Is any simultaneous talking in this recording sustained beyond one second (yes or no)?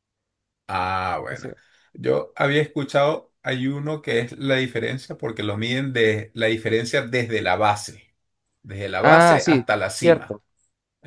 yes